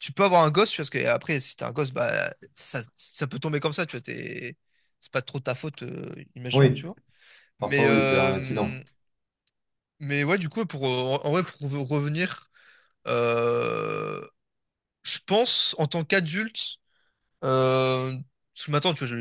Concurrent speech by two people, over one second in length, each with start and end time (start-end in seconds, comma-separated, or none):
7.6-8.8